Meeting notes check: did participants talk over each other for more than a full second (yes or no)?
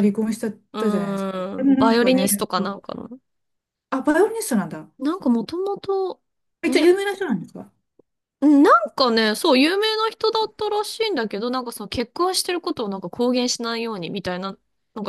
yes